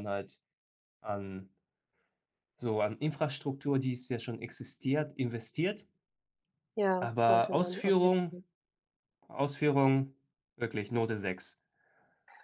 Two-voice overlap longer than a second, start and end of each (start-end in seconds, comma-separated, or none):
7.0-8.4